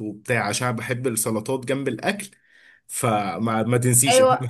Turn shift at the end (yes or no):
yes